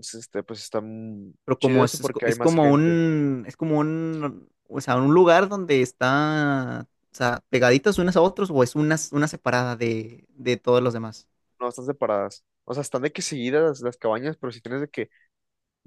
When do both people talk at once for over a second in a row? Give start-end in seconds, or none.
1.4-3.0